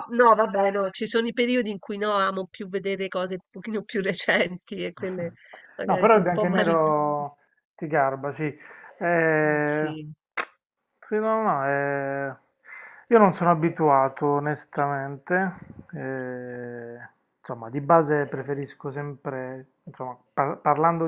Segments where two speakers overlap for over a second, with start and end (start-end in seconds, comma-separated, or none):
5.8-7.2